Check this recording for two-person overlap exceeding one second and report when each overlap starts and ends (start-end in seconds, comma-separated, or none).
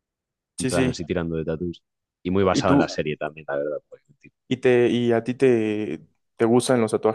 none